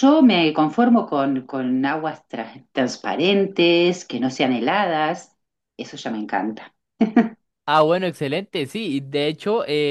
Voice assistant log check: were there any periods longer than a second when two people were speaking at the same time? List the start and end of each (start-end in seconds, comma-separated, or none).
none